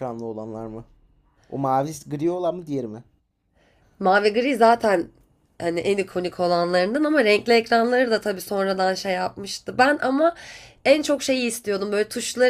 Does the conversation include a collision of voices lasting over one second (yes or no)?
no